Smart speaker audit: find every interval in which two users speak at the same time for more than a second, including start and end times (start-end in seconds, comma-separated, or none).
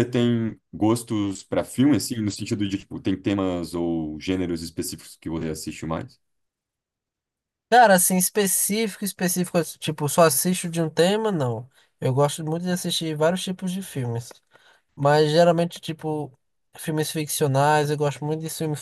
none